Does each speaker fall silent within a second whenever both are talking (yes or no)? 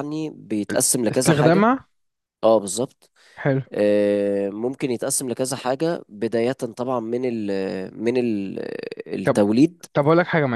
yes